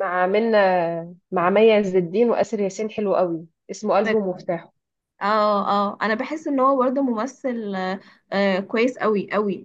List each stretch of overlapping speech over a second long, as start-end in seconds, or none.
none